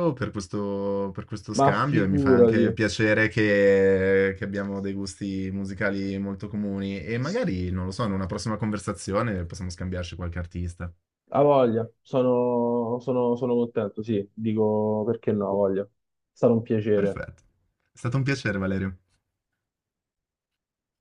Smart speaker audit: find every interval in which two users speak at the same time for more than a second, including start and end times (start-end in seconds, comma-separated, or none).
1.6-2.8